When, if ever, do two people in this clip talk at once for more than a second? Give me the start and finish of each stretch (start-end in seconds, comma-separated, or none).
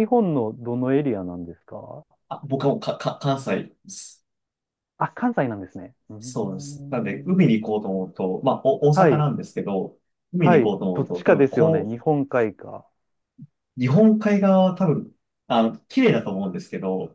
6.2-7.4, 10.4-12.0